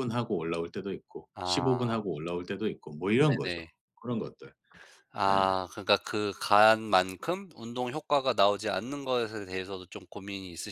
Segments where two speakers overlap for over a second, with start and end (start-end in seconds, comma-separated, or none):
none